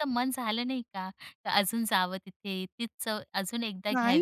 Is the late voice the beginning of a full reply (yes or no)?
yes